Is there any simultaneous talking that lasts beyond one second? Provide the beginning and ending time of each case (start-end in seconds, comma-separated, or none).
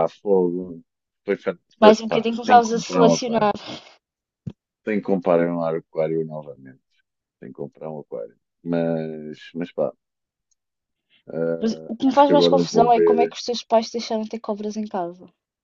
1.8-3.5, 11.6-13.4